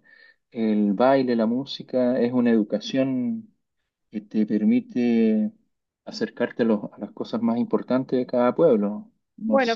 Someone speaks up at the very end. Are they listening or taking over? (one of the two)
taking over